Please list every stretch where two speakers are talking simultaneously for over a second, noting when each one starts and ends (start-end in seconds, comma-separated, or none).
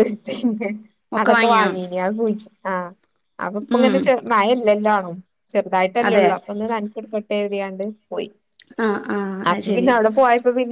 none